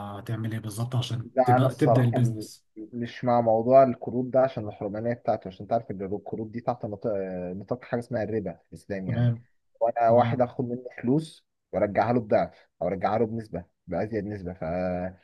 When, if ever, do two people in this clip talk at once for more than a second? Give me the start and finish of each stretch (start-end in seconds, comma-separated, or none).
1.2-2.7